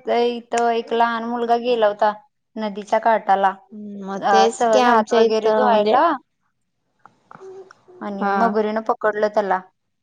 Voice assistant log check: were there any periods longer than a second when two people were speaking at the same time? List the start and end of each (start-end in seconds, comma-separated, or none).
4.3-6.0